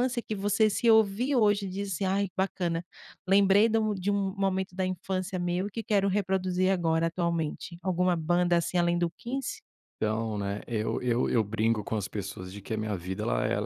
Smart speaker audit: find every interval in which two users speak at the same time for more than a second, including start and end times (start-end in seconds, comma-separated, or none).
none